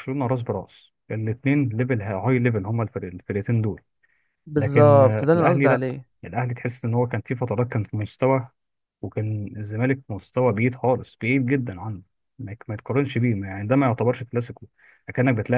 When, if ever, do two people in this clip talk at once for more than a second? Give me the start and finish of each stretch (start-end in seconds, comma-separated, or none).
4.5-5.8